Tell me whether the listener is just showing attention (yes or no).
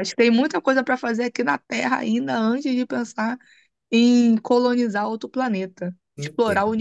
no